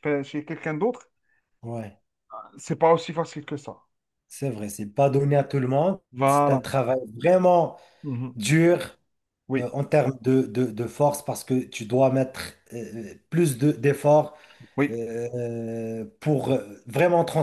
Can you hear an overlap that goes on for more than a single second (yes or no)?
no